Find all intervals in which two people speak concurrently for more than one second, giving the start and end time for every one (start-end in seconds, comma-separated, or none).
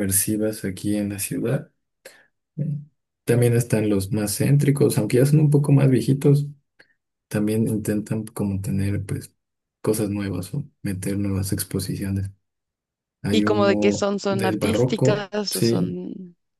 13.3-16.0